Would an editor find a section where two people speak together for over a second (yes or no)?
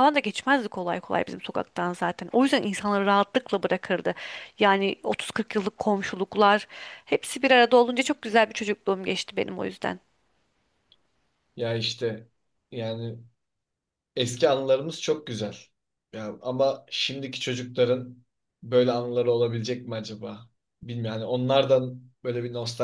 no